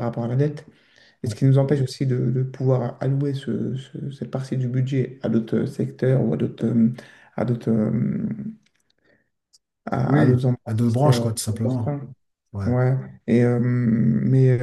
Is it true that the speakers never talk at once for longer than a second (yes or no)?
no